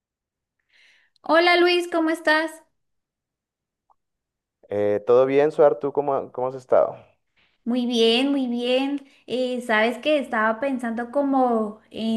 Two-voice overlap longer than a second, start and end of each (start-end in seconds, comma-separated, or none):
none